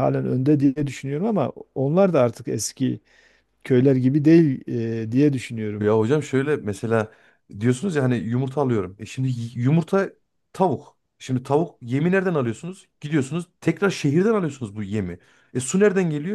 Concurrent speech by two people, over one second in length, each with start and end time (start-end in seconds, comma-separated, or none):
none